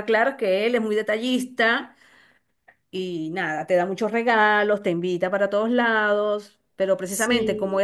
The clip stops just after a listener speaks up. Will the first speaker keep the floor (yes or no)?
yes